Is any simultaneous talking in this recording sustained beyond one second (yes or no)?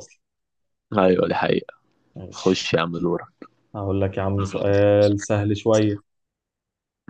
no